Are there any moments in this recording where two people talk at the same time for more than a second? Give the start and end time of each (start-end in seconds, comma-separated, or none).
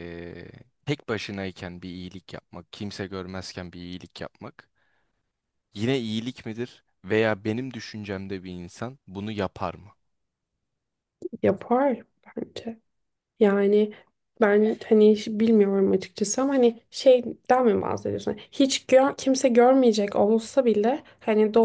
none